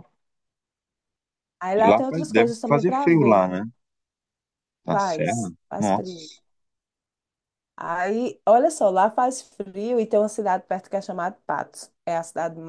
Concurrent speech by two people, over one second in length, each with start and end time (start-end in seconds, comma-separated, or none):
1.7-3.4, 4.9-6.3